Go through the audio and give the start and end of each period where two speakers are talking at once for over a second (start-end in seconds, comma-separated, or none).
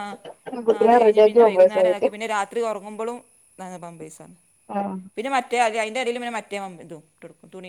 0.7-2.1